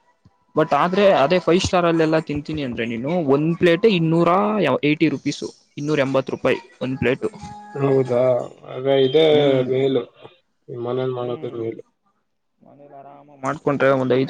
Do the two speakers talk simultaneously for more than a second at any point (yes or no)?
no